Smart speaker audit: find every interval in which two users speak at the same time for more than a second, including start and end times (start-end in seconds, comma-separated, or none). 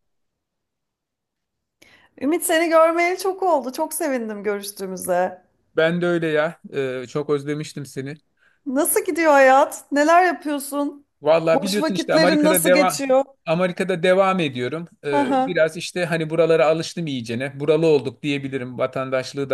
11.5-13.0